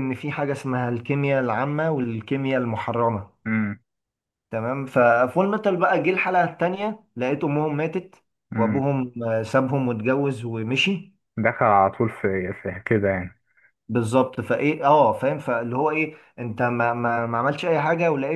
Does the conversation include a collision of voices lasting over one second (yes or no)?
no